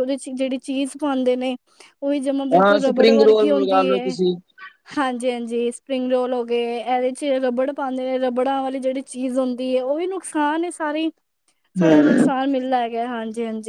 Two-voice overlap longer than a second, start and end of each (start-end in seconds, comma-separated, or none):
2.6-4.2